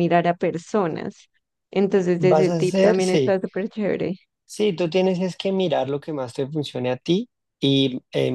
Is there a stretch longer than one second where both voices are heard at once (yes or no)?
yes